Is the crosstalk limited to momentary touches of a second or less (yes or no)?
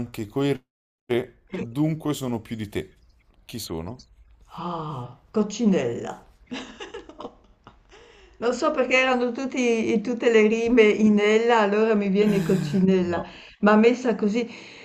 yes